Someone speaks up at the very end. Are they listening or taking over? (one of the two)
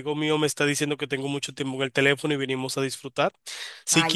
listening